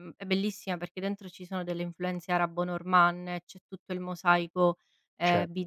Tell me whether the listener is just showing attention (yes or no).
no